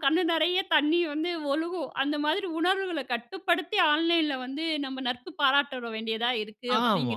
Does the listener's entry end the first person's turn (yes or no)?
yes